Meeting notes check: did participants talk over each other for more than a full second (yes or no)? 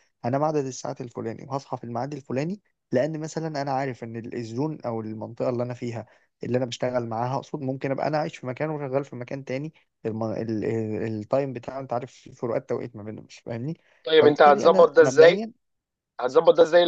yes